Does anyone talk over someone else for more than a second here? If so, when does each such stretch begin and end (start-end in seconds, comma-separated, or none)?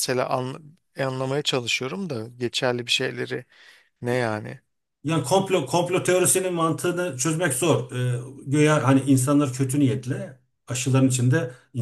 none